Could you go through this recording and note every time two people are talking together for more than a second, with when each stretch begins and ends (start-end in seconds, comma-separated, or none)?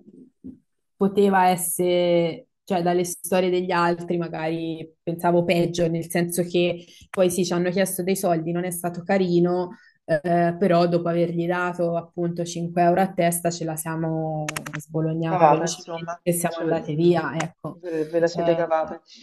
15.3-17.3